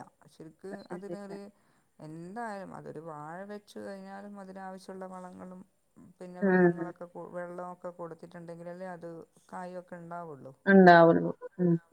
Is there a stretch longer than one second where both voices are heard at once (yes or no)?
no